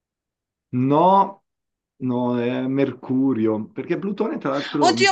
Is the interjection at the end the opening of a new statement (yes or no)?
yes